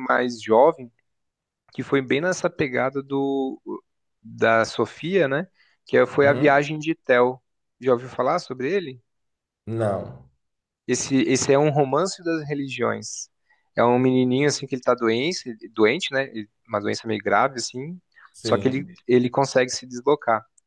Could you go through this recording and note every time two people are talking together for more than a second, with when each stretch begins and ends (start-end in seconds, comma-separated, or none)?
none